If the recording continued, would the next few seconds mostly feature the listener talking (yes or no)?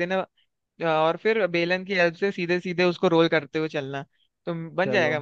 no